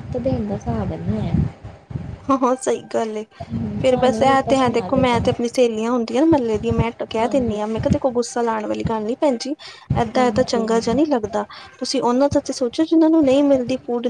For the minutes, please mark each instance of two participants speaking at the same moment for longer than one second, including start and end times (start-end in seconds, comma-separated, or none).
3.8-5.3